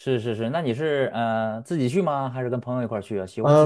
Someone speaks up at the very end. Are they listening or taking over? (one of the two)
taking over